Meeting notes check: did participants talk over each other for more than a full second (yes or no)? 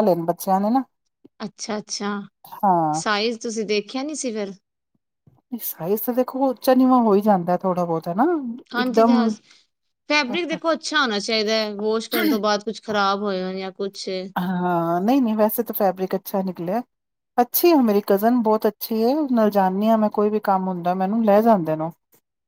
no